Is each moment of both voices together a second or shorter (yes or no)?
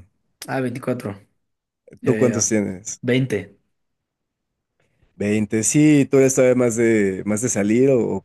yes